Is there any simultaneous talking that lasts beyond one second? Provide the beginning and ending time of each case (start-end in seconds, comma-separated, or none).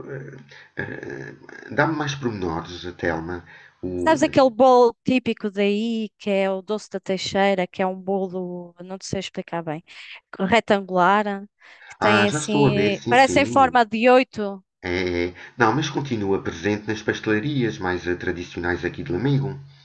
12.0-13.8